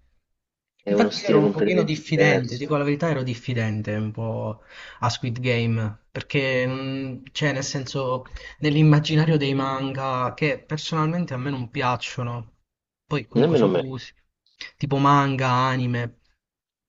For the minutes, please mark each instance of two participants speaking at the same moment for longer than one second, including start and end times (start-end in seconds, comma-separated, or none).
0.9-2.8